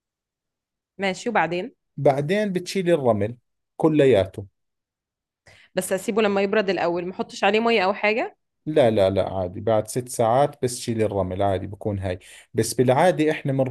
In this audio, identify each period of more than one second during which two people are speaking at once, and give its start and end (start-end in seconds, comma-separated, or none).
none